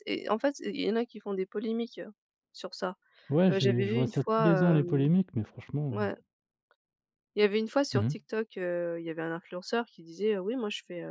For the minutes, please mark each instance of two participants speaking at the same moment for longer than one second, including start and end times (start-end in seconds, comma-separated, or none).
3.5-5.1